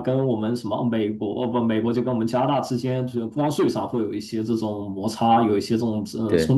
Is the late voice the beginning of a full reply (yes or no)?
no